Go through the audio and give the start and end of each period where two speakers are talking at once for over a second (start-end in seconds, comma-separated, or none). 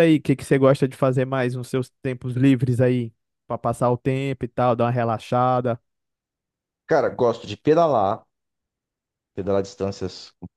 none